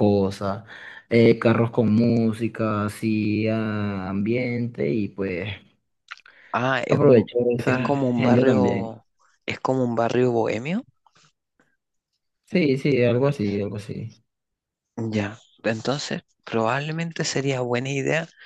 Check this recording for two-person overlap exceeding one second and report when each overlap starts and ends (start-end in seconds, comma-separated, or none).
6.9-8.9